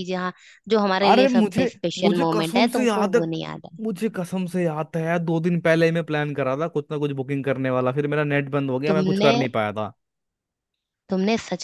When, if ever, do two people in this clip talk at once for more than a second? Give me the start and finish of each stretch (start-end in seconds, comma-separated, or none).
1.1-3.2